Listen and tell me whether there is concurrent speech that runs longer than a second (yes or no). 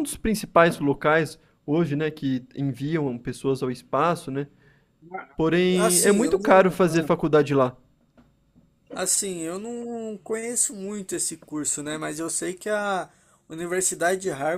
yes